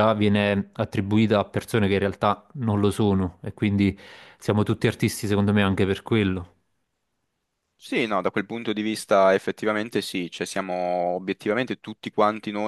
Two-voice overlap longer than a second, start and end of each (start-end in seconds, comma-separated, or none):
none